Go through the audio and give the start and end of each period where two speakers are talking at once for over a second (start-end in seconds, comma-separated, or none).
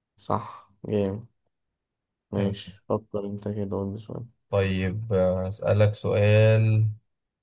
none